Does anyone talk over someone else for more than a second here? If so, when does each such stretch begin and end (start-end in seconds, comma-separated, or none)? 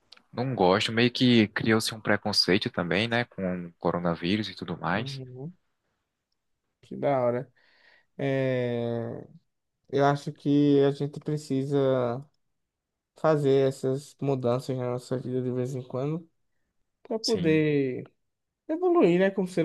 none